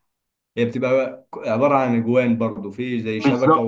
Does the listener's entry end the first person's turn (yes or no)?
yes